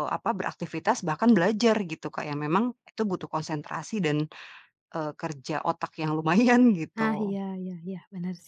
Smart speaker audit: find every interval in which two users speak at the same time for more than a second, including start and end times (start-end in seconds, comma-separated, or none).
none